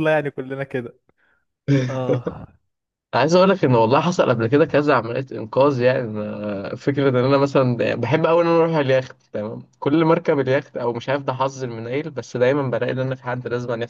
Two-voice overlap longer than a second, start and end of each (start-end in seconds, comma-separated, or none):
none